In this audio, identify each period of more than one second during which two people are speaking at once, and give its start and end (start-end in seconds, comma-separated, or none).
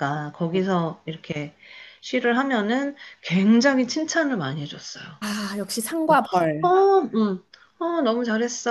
none